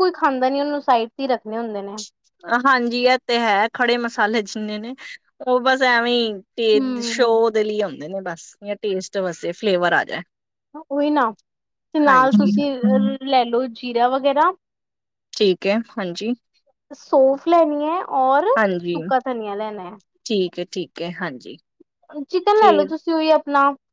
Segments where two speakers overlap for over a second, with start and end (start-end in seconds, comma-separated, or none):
none